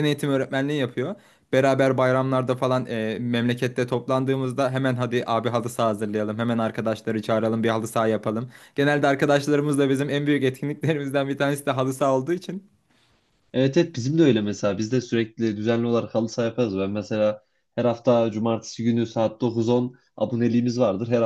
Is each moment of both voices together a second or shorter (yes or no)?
yes